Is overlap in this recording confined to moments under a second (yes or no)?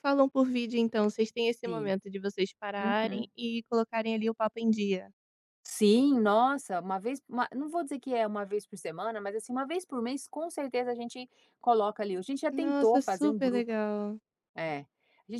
no